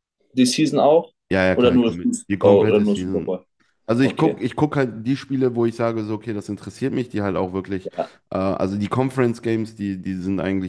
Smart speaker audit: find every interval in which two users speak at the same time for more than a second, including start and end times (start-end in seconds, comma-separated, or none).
1.6-3.3